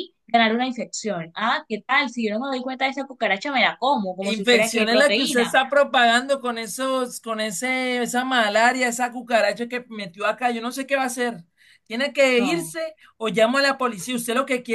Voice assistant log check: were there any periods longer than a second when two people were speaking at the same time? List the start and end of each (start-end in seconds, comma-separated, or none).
4.3-5.6